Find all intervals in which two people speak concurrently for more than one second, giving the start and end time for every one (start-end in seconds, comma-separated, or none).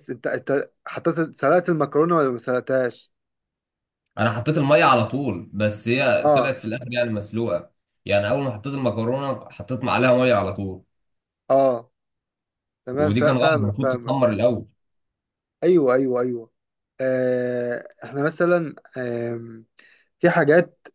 12.9-14.2